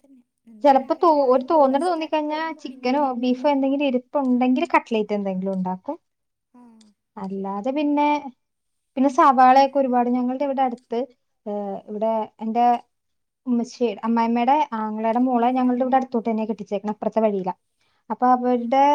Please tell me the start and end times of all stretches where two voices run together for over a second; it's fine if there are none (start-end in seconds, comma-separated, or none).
0.6-3.4